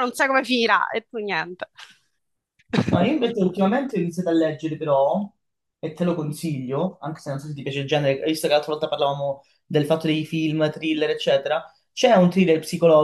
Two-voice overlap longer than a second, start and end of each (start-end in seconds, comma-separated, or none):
none